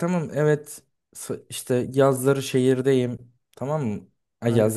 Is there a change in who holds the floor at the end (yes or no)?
no